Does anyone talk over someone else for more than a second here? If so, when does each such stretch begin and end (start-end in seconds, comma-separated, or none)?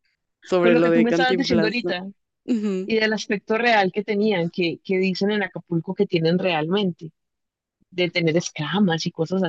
0.6-1.9